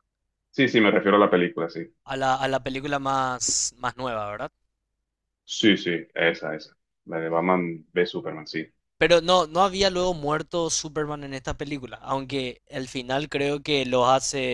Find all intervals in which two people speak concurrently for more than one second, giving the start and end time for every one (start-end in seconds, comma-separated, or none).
none